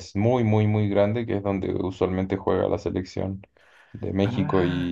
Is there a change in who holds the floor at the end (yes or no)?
no